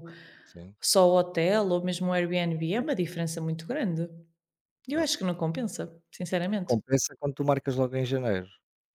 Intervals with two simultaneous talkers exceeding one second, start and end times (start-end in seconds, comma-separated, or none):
none